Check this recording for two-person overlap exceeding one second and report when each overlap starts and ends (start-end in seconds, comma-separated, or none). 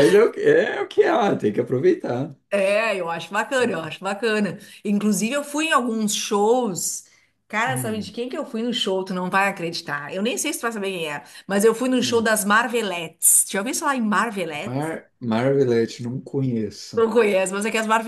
none